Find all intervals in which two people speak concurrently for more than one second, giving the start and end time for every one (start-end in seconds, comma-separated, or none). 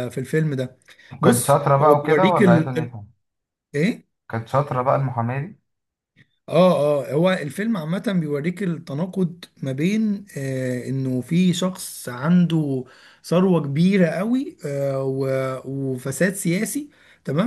1.2-3.0